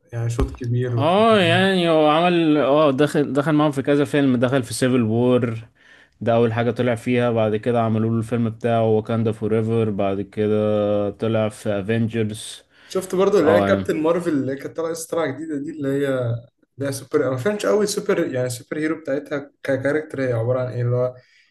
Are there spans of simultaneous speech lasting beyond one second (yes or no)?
no